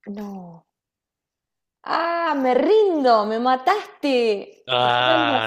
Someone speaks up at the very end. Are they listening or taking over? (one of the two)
taking over